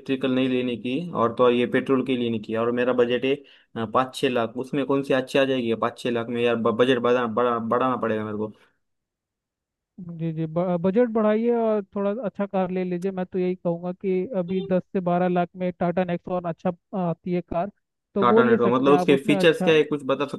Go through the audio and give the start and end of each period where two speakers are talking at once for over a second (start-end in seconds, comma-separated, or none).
18.2-19.7